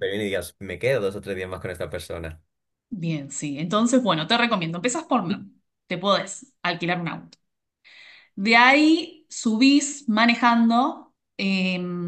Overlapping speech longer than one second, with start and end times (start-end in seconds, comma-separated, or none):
none